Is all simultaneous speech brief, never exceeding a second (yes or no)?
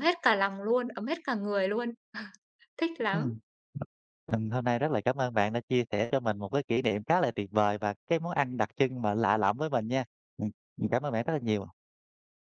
yes